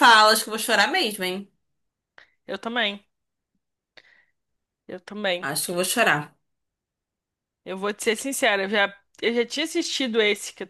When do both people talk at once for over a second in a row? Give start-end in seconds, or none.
none